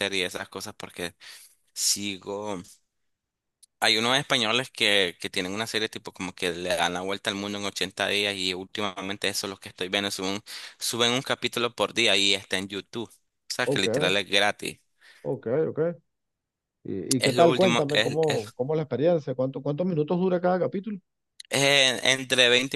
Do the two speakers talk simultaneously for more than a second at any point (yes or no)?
yes